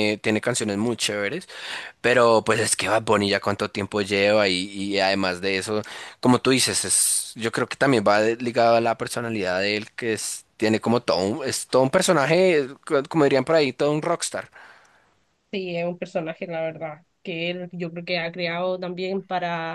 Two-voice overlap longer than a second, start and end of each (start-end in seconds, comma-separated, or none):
none